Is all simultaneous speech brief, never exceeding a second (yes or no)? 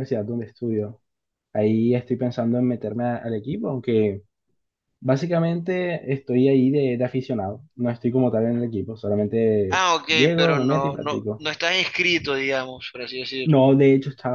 no